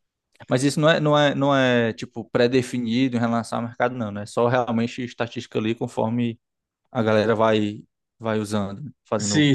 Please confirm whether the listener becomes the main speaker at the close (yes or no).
yes